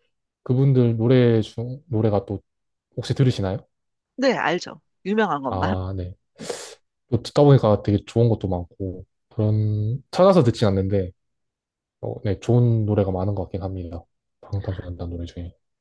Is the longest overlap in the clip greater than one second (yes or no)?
no